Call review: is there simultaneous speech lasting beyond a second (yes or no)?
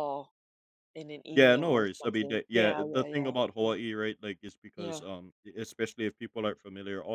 yes